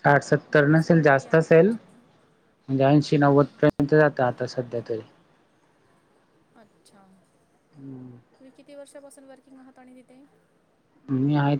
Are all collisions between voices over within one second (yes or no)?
no